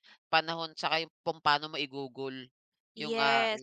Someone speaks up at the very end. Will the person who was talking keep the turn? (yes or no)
no